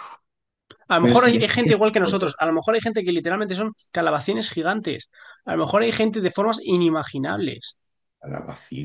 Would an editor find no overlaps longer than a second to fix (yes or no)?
no